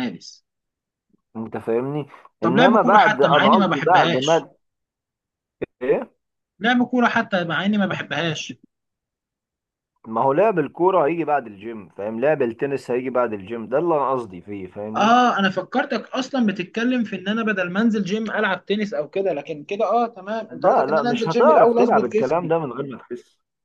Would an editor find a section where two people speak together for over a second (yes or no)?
yes